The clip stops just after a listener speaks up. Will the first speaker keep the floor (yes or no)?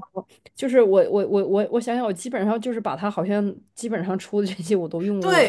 no